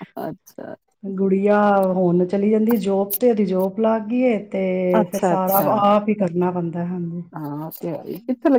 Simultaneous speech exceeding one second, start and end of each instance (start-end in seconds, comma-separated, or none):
none